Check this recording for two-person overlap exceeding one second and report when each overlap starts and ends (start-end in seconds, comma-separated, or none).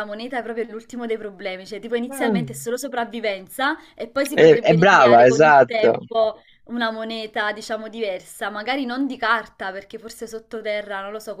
4.3-6.1